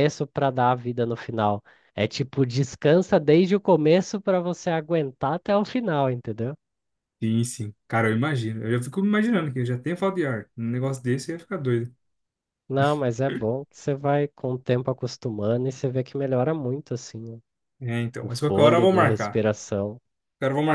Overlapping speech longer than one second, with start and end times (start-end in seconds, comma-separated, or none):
18.2-19.4